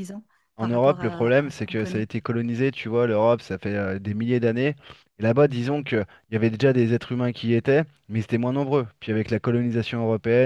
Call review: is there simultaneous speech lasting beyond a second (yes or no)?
yes